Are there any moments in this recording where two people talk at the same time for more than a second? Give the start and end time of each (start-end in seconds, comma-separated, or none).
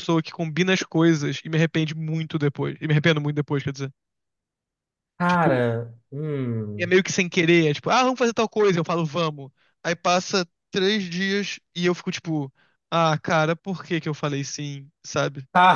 none